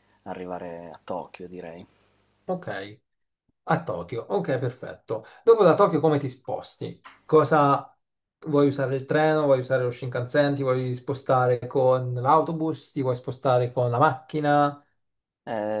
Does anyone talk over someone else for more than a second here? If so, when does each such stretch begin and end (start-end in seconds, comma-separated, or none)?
none